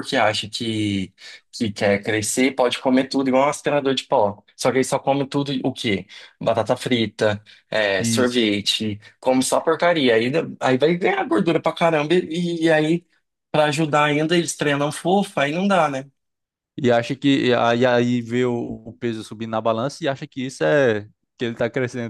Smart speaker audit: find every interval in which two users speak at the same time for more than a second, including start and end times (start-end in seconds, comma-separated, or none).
none